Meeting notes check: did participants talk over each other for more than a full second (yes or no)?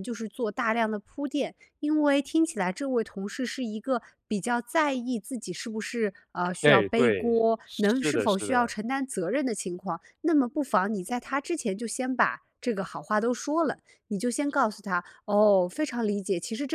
yes